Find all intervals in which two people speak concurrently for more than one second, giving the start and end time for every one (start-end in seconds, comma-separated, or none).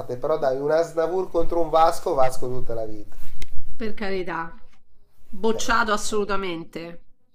none